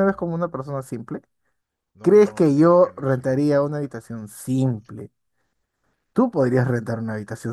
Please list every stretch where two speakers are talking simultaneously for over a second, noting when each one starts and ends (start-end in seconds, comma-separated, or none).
2.0-3.6